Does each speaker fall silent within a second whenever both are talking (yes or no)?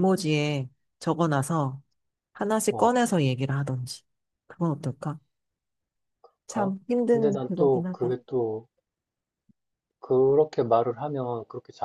no